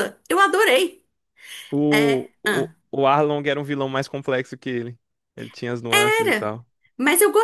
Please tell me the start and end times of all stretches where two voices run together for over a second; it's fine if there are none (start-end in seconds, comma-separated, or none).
none